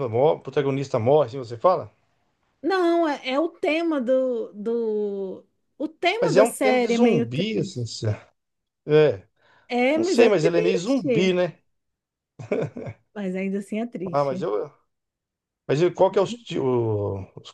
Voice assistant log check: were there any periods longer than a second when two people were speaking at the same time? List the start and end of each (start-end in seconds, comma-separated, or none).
6.2-7.9, 9.9-11.3